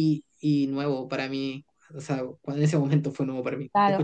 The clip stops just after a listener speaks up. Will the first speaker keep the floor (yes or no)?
no